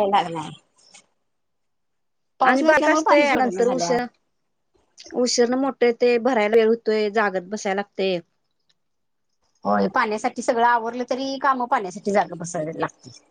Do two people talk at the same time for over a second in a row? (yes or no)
yes